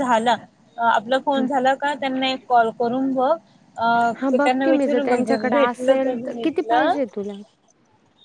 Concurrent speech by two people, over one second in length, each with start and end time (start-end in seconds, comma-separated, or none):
4.2-6.9